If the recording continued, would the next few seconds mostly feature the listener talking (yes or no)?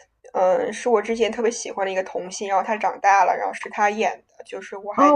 yes